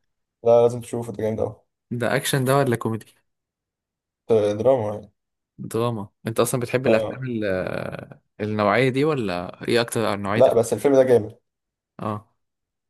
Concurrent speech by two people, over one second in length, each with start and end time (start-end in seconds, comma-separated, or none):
none